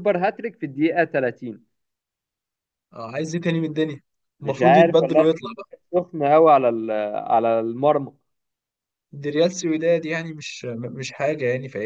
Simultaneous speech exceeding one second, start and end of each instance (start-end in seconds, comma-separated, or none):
4.4-5.7